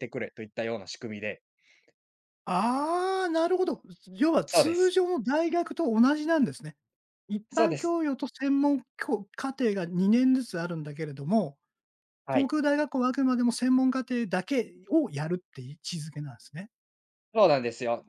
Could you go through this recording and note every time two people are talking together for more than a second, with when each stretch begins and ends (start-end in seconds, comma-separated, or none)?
none